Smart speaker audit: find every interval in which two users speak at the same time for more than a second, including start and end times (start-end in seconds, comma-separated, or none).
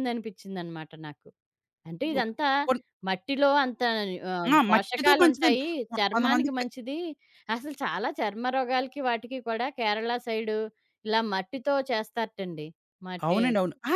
4.5-6.7